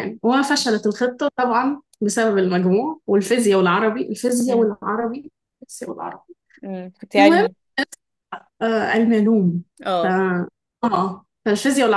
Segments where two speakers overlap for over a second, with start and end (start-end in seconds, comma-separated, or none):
none